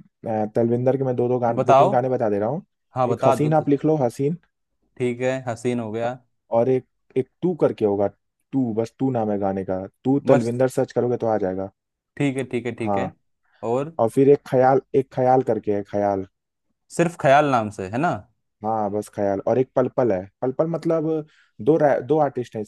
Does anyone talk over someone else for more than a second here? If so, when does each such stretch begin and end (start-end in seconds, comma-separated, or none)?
none